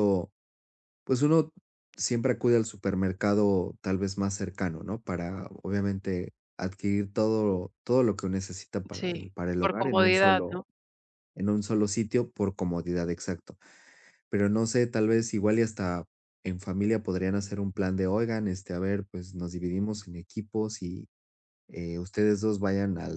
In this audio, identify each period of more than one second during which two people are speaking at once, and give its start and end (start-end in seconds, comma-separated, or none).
8.9-10.6